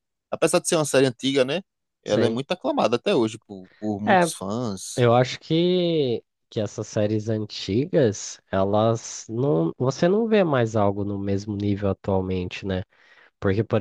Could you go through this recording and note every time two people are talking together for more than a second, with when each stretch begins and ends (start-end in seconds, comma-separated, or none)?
none